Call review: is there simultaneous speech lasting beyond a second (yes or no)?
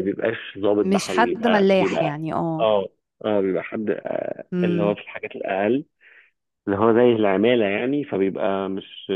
yes